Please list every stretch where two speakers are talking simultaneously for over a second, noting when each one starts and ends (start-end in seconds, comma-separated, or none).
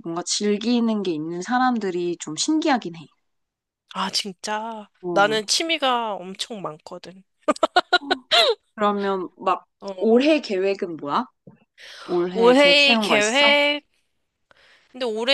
12.3-13.6